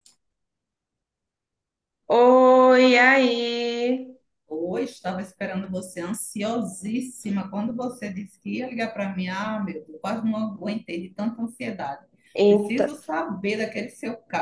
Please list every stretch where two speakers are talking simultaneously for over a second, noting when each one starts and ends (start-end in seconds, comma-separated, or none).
none